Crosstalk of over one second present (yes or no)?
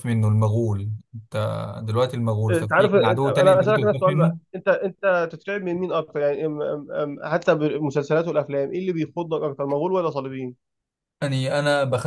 yes